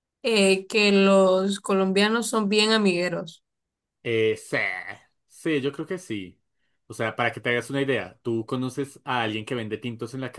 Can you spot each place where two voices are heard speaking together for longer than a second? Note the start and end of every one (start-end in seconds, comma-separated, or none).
none